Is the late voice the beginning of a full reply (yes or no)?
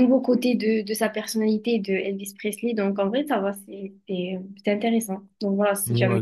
yes